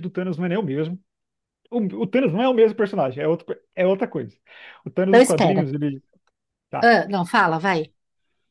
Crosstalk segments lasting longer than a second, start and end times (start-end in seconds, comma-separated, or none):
none